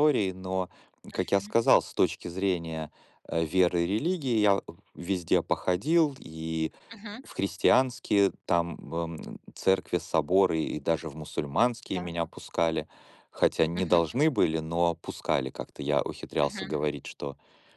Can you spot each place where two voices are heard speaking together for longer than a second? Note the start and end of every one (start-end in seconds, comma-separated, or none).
none